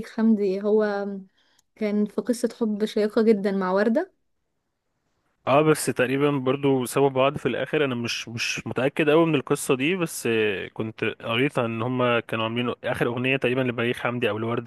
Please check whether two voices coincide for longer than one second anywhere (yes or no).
no